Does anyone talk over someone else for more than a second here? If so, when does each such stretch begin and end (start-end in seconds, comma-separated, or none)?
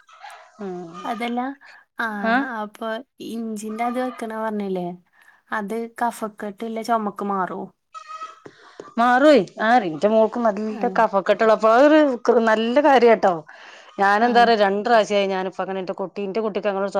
none